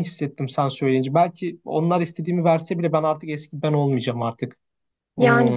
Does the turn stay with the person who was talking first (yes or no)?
no